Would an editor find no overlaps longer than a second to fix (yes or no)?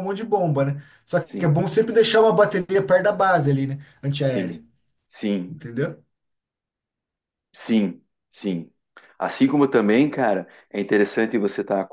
yes